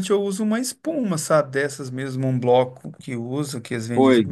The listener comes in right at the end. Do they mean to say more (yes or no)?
yes